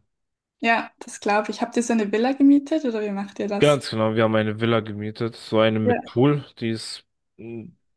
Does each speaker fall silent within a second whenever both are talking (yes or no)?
yes